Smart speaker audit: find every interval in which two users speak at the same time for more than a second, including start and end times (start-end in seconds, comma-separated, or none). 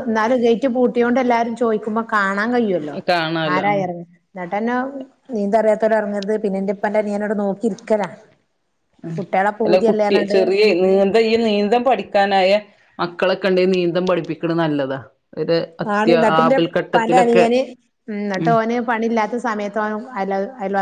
15.9-17.4